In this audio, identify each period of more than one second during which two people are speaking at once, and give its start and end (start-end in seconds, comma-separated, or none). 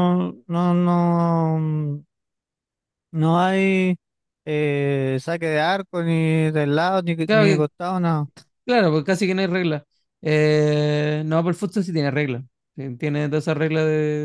none